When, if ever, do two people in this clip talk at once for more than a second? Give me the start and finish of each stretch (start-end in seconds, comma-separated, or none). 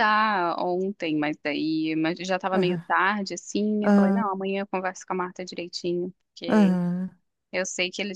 none